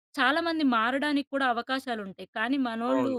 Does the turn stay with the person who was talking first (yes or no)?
yes